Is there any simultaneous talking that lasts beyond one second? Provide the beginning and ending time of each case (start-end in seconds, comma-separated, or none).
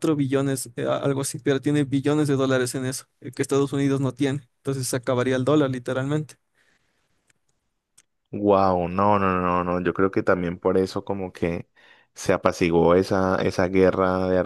none